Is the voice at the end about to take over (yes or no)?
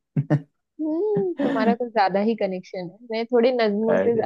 no